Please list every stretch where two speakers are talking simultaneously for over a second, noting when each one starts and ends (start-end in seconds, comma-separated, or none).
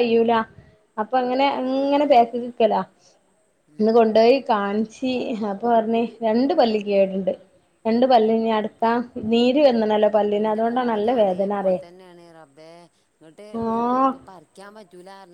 none